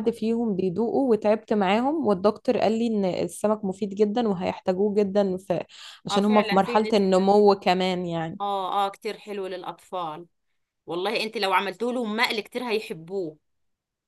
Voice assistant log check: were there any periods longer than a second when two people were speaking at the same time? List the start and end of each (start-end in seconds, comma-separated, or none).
6.1-7.3